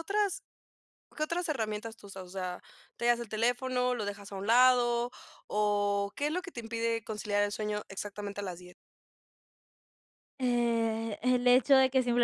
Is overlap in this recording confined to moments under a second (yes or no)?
yes